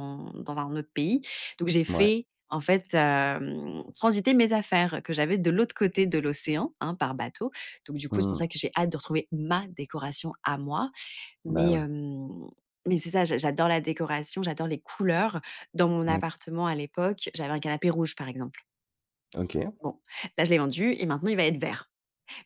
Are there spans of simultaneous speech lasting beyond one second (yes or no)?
no